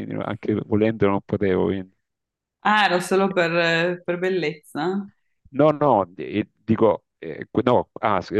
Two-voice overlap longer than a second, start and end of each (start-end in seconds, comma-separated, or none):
none